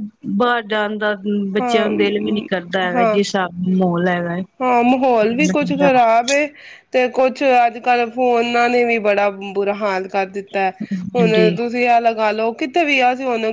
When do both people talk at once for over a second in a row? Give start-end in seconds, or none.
1.6-3.2